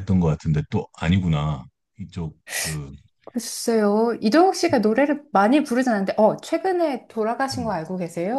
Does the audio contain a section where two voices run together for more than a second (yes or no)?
no